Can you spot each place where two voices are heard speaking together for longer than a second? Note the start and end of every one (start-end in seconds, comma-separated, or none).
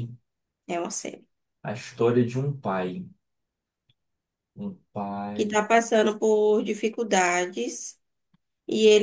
none